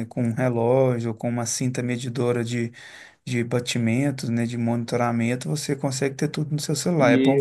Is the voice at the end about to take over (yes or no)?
yes